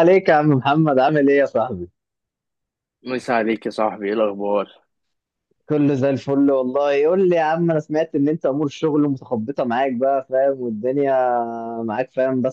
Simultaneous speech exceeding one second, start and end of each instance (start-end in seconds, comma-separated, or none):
none